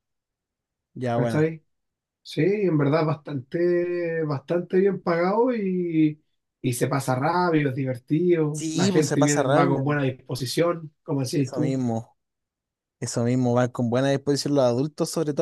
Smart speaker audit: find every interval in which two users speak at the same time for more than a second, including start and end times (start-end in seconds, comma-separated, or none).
8.5-9.8